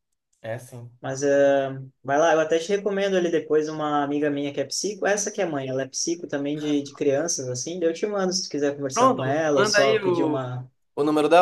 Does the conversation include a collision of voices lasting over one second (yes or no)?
yes